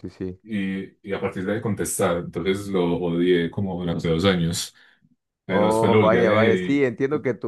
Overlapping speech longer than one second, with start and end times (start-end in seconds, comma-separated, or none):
5.5-6.9